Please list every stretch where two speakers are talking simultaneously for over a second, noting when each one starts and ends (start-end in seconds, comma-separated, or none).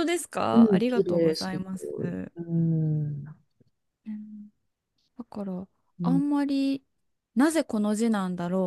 0.5-2.3